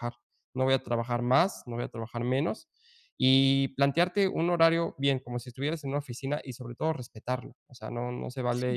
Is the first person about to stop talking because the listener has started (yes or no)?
no